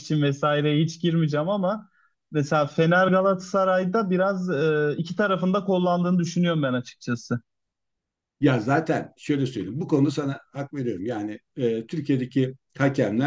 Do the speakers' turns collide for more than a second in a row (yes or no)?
no